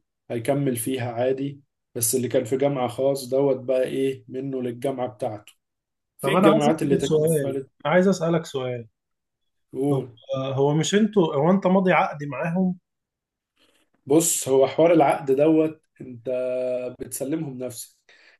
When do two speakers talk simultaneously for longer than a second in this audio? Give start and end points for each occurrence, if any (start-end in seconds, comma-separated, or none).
6.2-7.6